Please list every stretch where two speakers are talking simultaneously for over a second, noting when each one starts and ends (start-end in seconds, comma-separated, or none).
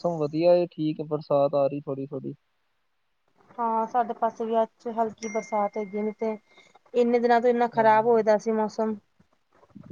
none